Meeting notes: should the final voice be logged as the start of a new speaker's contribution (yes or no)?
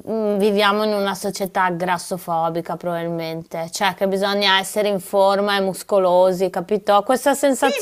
yes